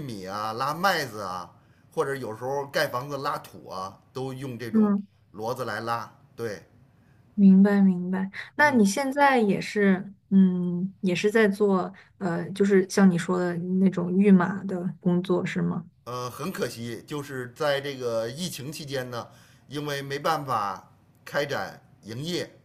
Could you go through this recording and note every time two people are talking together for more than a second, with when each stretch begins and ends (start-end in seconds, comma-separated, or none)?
none